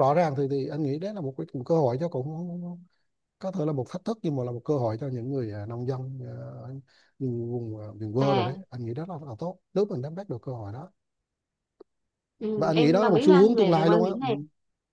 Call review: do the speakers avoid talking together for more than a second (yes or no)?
no